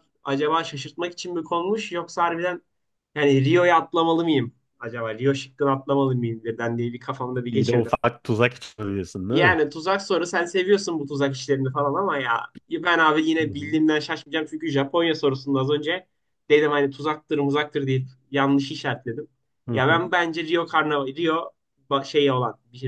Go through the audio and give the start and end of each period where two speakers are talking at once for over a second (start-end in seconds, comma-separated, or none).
none